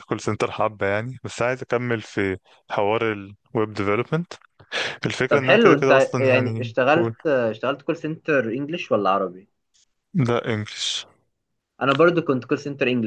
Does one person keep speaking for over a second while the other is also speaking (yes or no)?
yes